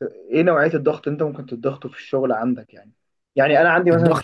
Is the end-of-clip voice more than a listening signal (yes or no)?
no